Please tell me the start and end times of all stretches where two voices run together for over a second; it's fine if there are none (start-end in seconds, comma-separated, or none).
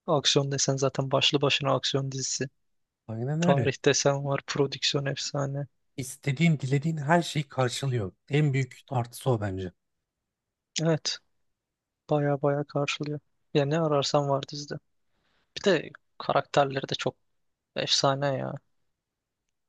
none